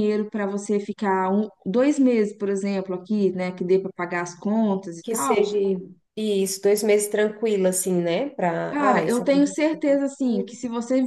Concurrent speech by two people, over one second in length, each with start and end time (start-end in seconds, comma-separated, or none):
8.7-10.5